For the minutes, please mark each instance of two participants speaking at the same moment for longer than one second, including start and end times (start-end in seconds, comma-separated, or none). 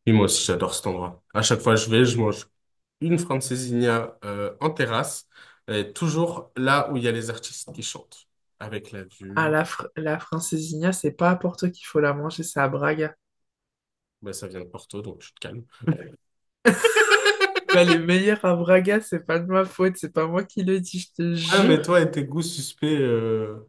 none